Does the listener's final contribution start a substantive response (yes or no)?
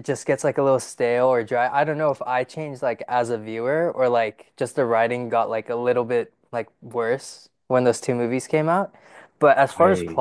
no